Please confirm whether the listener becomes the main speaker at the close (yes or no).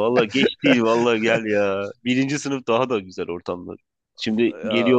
no